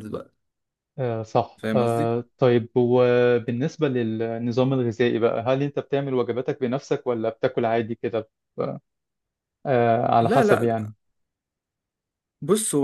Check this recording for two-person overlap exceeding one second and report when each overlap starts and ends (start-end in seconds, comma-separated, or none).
none